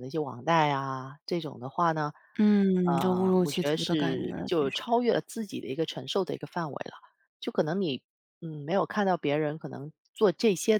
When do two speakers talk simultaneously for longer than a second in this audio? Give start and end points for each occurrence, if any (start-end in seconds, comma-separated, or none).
2.8-4.8